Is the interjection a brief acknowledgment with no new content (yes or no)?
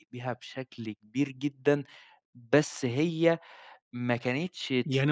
no